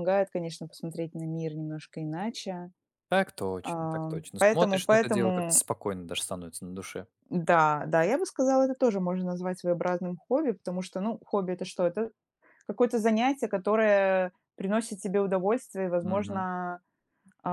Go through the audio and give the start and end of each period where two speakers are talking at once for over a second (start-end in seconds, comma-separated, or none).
3.6-5.6